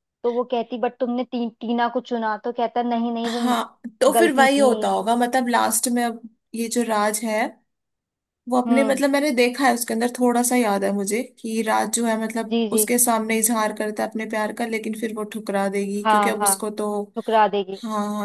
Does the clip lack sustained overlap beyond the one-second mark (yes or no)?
yes